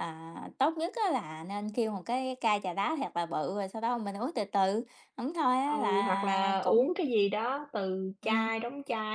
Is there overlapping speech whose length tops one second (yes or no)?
yes